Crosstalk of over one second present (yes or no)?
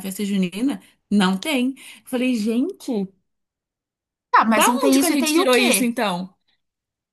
yes